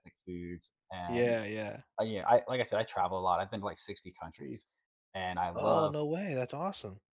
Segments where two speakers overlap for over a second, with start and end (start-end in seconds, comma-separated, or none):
none